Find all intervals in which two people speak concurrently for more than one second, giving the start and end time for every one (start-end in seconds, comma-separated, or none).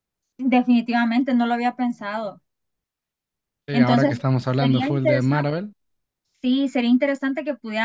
3.7-5.5